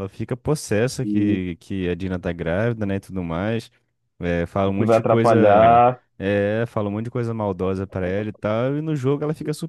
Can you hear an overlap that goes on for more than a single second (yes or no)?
yes